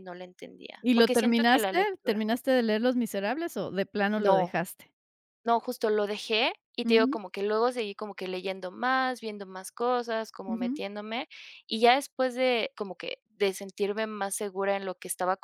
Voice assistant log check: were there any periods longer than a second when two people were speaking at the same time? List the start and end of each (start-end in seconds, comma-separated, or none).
0.8-2.2